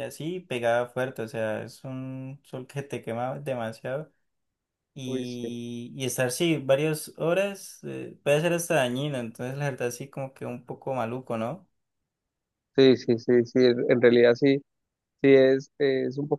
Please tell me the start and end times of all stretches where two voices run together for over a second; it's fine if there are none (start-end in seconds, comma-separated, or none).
none